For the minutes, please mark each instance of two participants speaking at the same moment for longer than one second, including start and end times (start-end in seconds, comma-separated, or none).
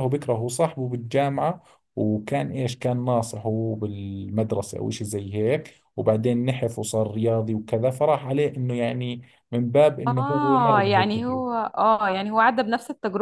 10.1-11.6